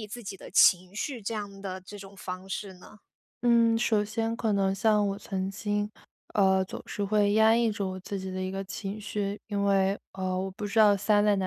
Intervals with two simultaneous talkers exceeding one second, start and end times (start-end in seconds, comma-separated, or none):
none